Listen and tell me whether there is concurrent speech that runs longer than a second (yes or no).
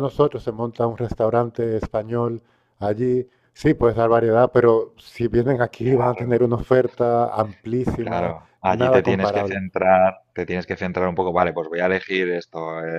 yes